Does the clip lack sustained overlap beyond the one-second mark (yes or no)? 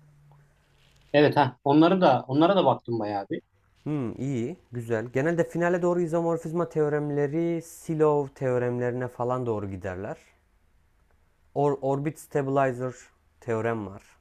yes